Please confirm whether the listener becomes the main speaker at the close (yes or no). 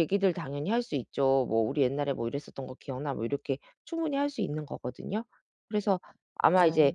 no